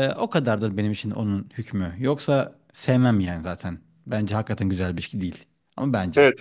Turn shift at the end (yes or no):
yes